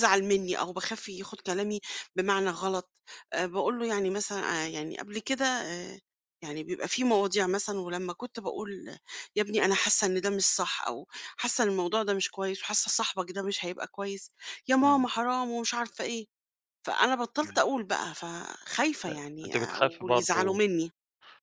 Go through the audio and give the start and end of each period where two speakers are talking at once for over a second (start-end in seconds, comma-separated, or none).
19.1-20.6